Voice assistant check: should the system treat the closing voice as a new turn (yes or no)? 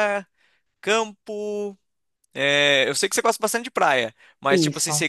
no